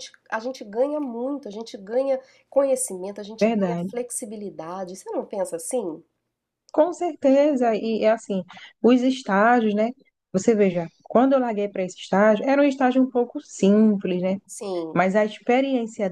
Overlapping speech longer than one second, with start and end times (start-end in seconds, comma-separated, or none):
none